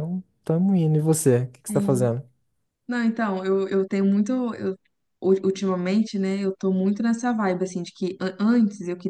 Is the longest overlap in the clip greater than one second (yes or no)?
no